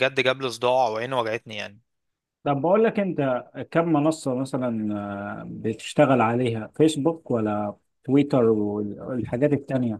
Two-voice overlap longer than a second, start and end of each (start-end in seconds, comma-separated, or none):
none